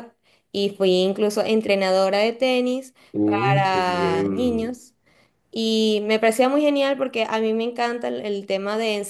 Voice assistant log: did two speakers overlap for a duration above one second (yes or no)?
yes